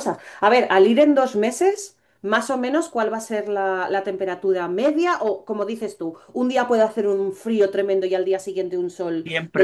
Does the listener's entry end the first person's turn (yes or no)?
yes